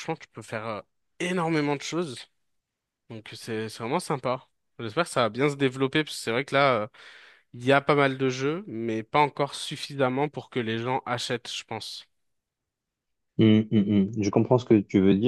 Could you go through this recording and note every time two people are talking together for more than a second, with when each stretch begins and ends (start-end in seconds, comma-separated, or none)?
none